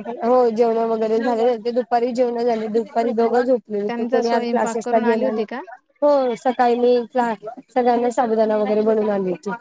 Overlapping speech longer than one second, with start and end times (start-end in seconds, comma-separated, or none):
3.9-5.4